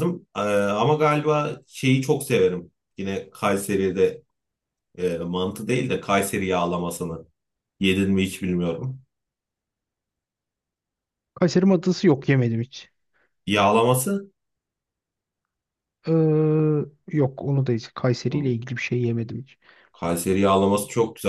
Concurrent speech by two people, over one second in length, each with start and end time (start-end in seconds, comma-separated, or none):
none